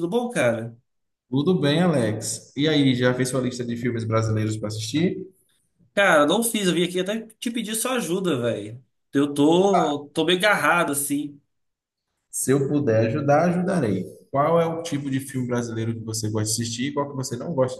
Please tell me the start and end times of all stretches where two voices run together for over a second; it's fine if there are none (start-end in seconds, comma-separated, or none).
none